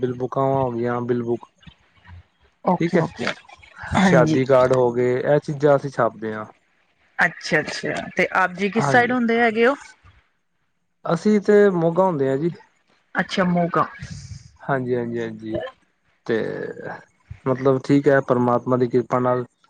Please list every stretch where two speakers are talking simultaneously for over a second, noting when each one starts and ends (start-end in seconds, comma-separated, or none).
none